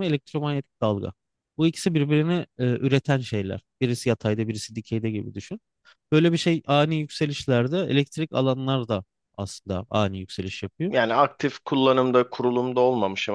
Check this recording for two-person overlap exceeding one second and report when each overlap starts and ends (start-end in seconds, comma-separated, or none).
none